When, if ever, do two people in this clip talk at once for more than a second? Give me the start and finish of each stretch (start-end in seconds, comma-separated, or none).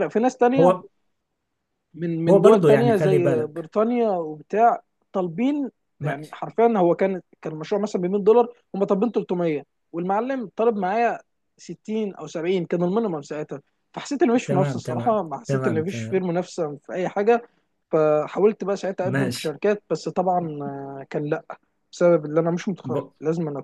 2.3-3.7, 14.4-16.2